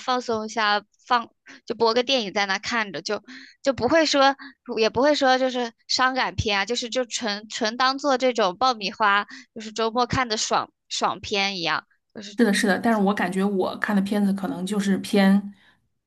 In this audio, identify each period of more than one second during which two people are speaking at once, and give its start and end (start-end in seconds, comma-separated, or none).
none